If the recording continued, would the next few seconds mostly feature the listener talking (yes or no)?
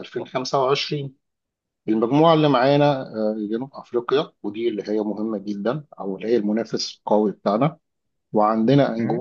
no